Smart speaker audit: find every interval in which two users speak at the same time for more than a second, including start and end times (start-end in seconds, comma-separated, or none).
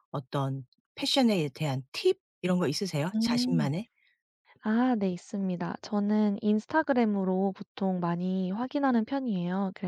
none